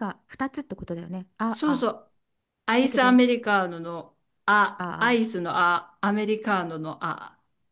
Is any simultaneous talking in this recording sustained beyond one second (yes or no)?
no